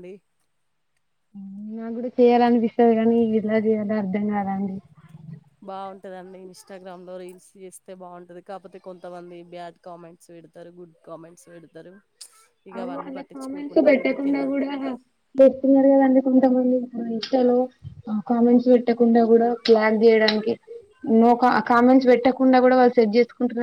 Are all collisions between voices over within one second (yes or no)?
no